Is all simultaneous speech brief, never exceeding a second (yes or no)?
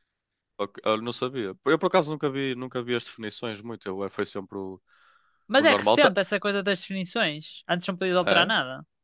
yes